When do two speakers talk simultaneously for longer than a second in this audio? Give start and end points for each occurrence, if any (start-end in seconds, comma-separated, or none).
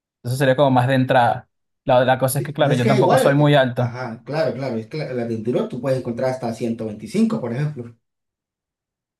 2.3-4.0